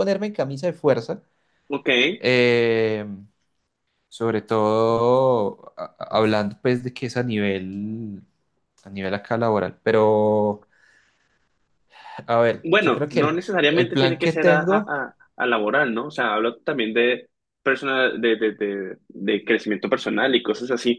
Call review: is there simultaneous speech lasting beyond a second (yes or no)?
yes